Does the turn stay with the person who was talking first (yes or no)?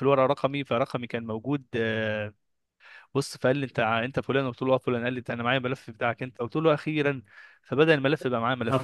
yes